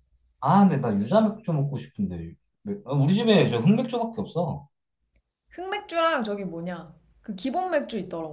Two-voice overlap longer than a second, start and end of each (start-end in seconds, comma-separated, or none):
none